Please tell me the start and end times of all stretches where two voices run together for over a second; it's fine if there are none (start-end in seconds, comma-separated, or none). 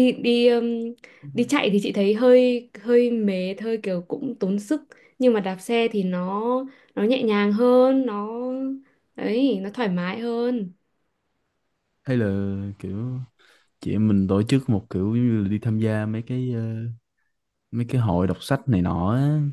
none